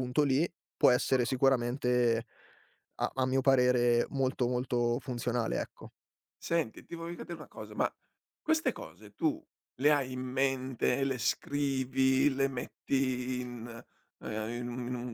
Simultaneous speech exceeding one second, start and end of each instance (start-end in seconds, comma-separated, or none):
none